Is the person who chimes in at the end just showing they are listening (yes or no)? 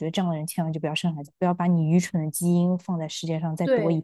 no